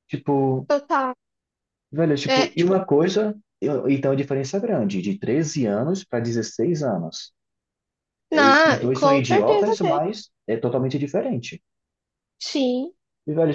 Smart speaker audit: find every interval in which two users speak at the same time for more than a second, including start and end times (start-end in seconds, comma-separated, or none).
8.3-10.0